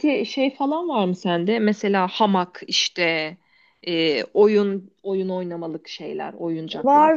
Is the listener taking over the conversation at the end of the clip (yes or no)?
yes